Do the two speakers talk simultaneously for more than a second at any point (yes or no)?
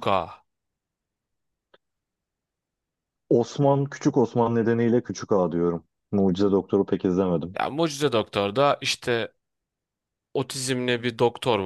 no